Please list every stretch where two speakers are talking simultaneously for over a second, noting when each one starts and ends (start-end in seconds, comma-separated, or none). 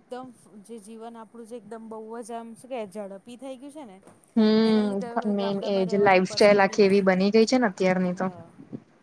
4.7-7.5